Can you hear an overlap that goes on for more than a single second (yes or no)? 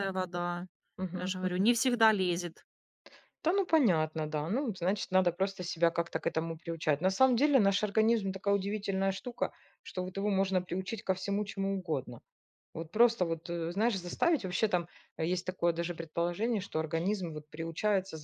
no